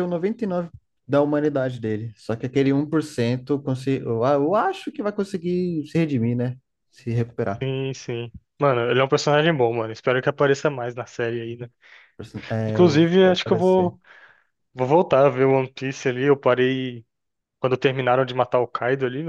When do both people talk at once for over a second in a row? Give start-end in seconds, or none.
12.7-14.0